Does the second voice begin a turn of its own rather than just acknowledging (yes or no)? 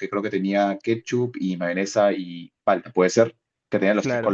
yes